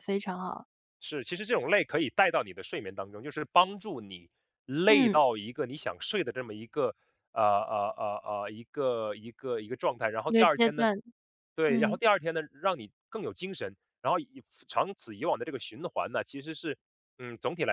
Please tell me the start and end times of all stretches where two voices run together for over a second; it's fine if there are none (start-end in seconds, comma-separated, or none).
none